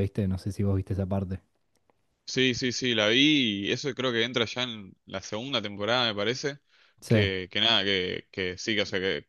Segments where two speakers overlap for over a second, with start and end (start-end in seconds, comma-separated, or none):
none